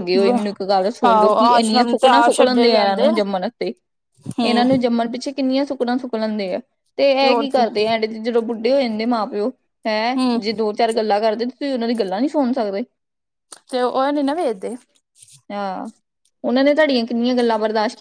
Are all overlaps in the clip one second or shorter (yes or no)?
no